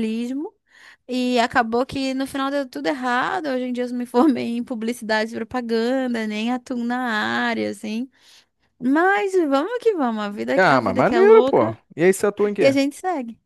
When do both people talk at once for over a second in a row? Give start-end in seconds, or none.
10.5-11.8